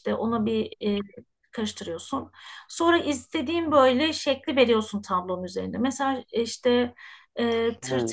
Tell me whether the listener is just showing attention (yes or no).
yes